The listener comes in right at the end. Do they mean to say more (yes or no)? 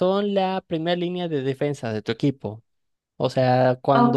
yes